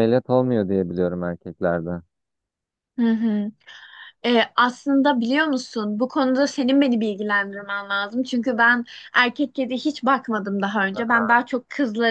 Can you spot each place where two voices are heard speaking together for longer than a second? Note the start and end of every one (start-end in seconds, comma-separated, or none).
none